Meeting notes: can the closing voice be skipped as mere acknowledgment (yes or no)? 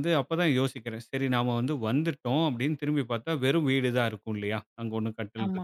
yes